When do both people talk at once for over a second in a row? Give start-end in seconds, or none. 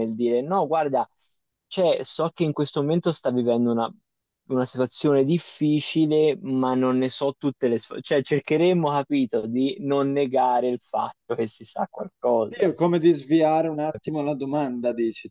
none